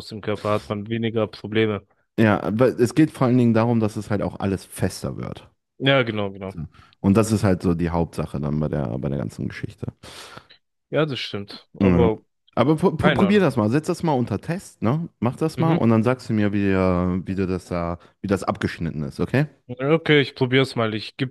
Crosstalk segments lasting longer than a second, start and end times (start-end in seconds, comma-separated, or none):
none